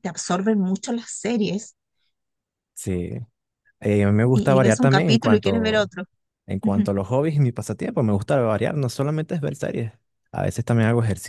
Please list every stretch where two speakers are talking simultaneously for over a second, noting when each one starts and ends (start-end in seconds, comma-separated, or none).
4.3-5.9